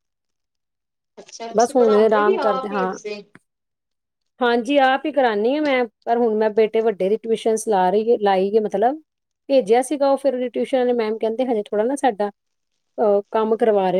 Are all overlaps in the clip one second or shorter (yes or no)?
no